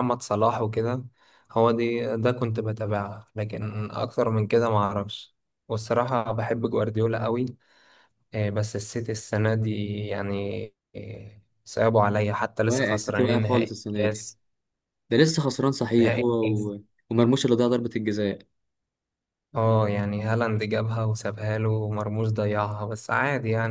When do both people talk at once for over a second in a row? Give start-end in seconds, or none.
12.6-14.3